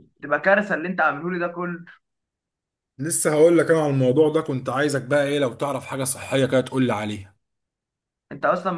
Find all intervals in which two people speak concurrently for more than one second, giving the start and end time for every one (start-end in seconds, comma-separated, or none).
none